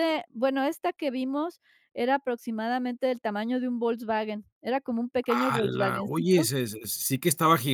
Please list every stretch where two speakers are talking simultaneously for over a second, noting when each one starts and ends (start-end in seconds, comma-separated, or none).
5.2-6.5